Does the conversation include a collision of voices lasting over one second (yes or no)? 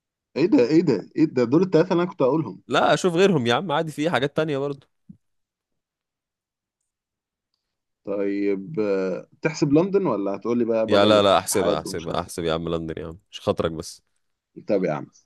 yes